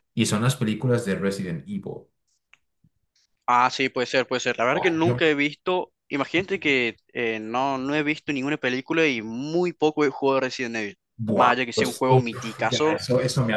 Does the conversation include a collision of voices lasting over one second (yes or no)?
yes